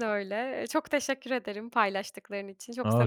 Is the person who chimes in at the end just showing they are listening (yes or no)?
no